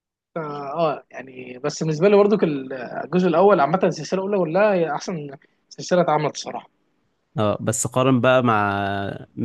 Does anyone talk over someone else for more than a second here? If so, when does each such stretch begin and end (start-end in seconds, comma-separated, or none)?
none